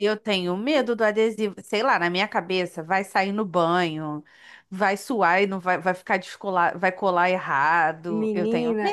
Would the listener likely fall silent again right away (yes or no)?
no